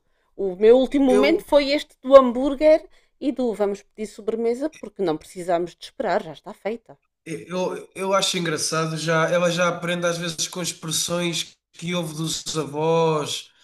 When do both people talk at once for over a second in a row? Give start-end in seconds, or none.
none